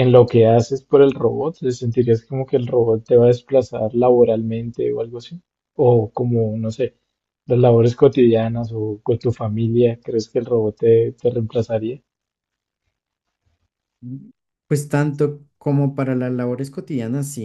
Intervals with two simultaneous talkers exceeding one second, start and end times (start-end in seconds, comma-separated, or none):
none